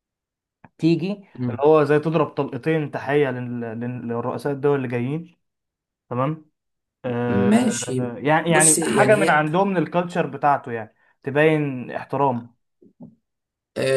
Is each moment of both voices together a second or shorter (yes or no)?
no